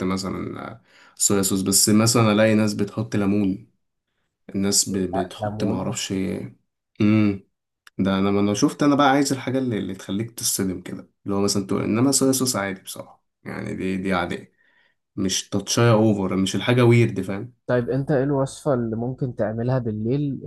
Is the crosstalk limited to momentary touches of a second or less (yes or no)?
yes